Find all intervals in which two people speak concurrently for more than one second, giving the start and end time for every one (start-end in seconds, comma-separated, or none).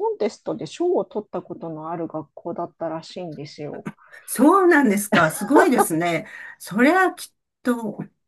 none